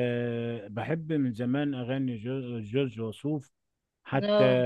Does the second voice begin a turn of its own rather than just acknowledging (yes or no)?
no